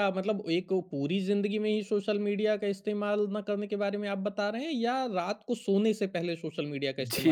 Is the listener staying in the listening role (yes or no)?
no